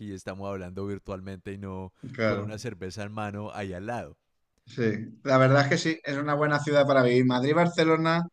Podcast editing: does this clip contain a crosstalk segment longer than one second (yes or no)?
no